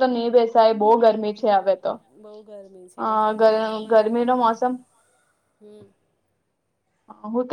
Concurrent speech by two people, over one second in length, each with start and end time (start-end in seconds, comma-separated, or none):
none